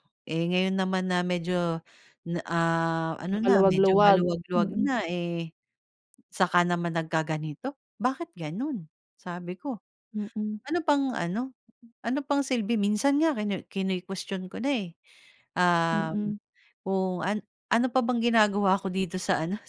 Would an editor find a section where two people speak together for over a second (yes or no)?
yes